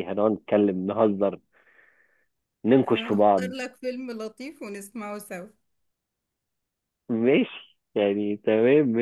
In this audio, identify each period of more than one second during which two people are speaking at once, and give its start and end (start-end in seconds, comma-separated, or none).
none